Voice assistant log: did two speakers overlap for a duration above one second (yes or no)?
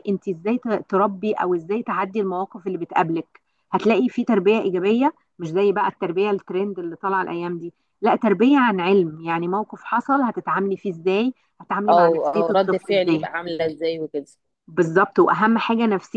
yes